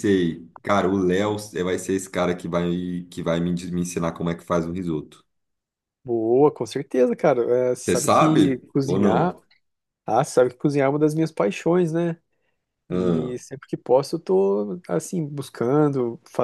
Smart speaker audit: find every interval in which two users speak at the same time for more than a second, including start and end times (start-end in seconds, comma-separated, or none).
7.8-9.3